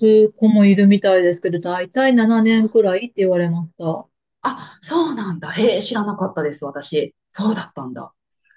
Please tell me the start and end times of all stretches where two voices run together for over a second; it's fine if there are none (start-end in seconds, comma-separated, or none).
none